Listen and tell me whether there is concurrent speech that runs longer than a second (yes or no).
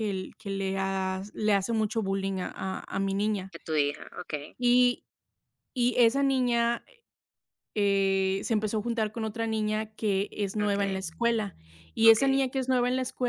no